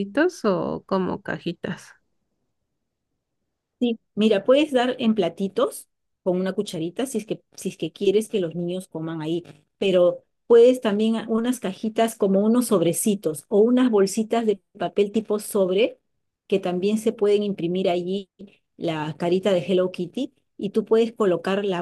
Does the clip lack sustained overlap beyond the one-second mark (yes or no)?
yes